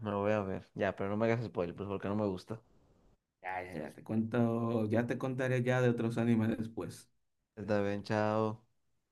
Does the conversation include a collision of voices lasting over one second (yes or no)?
no